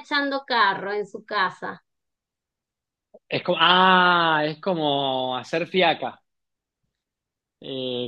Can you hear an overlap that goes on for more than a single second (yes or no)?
no